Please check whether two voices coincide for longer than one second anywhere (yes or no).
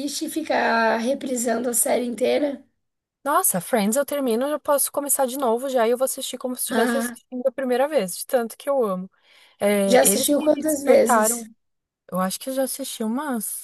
yes